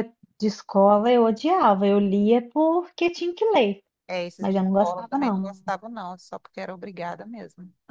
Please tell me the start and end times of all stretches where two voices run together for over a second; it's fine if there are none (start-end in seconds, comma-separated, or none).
4.4-5.6